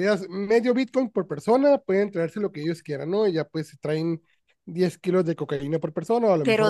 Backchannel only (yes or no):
no